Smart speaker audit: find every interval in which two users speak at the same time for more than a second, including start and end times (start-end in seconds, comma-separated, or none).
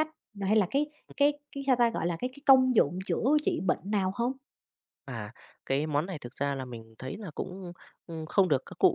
none